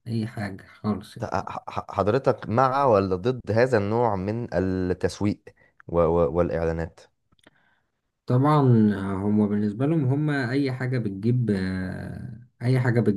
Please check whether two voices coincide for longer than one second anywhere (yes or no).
no